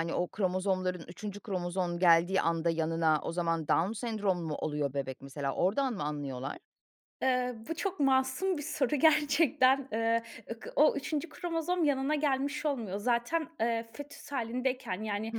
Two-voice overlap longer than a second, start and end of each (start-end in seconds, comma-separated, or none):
none